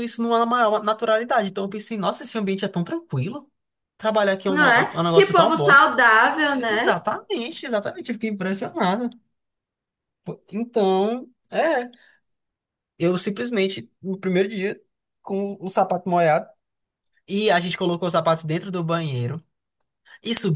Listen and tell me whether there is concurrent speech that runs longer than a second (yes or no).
yes